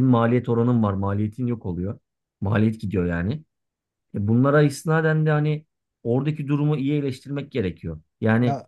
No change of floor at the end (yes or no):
yes